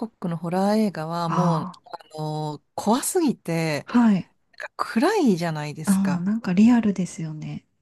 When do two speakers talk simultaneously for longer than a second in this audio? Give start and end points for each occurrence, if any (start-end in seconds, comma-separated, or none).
none